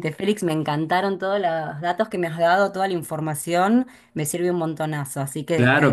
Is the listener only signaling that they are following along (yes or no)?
no